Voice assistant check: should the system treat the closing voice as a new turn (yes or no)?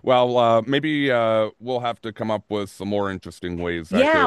yes